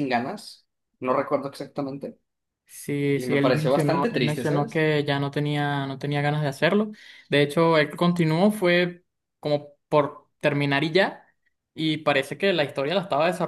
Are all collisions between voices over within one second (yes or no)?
no